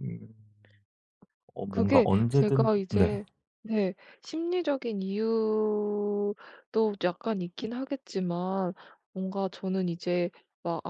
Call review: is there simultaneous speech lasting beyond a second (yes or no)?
yes